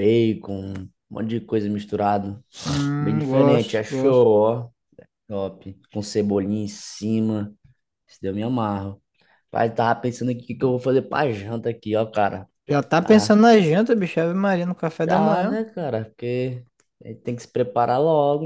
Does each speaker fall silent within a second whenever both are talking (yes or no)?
no